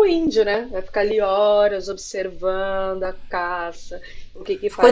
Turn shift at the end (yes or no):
no